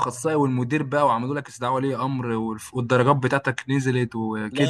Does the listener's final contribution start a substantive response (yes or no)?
yes